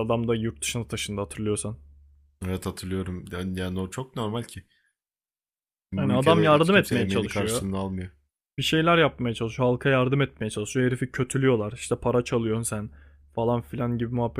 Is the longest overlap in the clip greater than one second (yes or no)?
yes